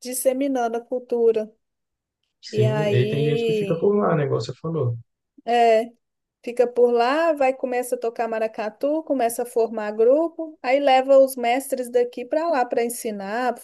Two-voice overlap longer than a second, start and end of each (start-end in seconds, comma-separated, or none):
2.5-3.9